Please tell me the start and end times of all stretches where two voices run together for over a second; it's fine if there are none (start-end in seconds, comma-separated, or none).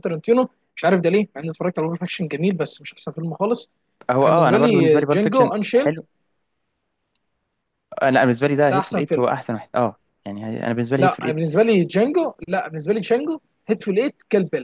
4.2-6.0